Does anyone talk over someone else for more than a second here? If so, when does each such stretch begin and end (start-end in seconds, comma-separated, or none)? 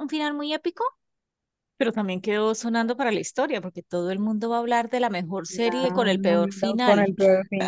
5.5-7.1